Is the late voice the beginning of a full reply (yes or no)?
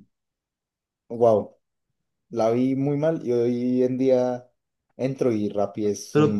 no